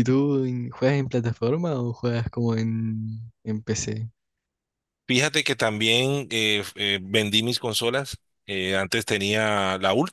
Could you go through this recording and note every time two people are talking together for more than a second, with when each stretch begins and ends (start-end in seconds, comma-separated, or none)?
none